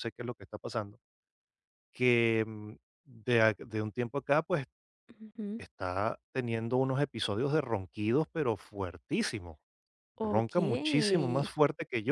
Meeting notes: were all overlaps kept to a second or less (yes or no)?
no